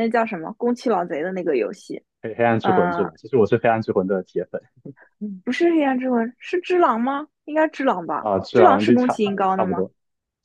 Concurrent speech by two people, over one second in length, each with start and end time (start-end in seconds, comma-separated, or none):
8.2-9.8